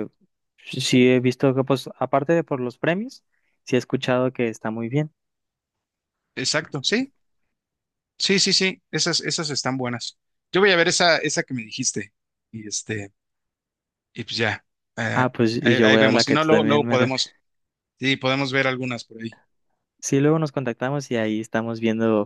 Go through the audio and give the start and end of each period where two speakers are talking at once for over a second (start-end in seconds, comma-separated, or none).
15.1-17.0